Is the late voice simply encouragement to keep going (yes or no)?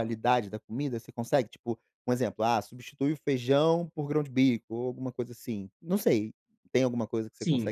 no